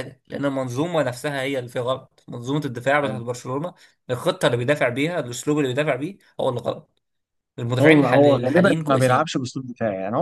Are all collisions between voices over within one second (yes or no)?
no